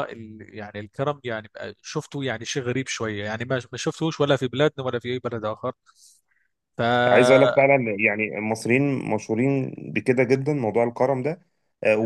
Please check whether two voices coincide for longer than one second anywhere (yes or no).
no